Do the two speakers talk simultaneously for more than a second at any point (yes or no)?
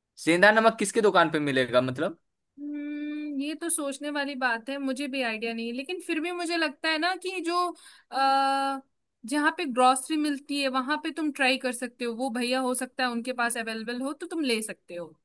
no